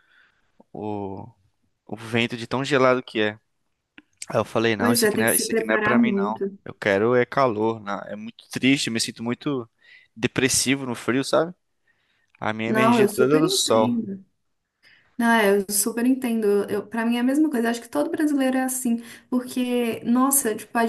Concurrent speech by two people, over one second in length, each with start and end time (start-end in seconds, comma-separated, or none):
4.8-6.6, 12.7-14.0